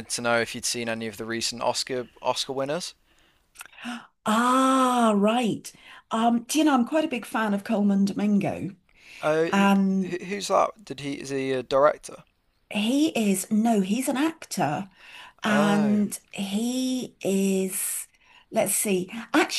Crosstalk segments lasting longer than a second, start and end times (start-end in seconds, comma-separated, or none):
none